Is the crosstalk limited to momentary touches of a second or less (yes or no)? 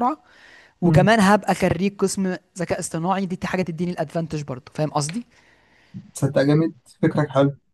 yes